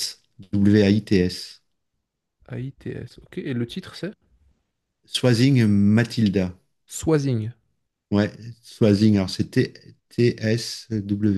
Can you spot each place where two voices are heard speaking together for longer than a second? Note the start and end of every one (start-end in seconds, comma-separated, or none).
none